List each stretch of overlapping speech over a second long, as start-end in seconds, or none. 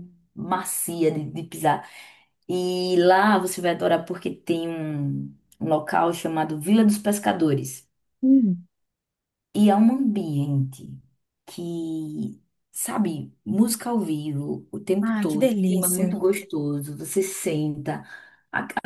15.0-16.2